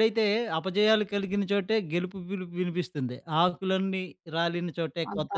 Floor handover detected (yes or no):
yes